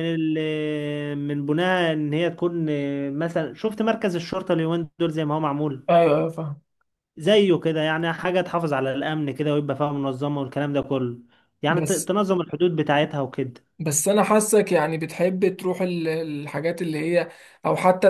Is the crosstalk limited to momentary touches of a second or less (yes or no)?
yes